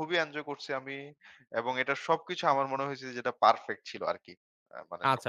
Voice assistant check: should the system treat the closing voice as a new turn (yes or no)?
yes